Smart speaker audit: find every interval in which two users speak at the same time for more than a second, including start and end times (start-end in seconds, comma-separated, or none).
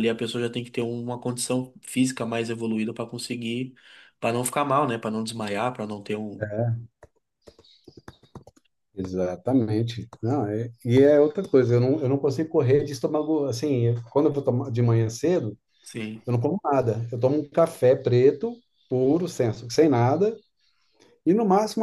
none